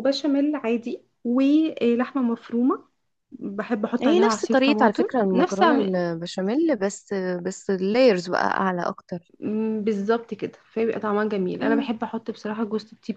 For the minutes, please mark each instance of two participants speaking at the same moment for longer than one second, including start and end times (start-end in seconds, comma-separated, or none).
4.0-5.6